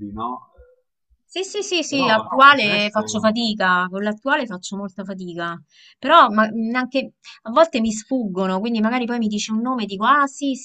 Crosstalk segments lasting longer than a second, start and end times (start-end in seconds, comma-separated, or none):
1.9-3.3